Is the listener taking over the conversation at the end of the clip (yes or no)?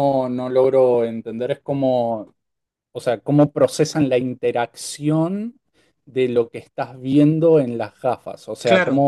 no